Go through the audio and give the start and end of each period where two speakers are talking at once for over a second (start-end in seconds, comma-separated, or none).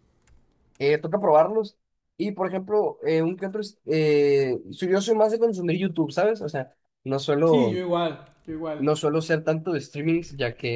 none